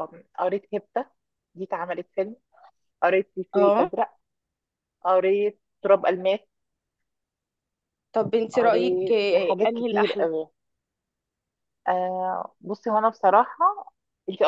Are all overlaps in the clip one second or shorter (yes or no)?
no